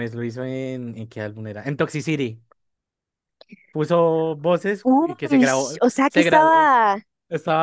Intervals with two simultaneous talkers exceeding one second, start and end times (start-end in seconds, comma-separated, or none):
4.8-6.7